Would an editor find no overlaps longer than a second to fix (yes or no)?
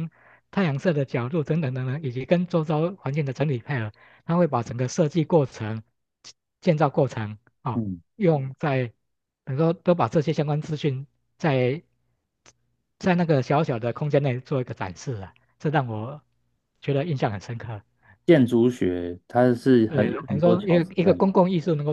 no